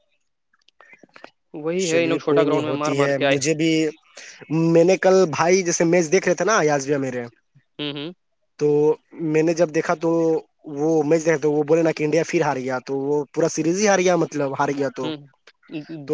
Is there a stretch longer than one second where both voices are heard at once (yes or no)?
yes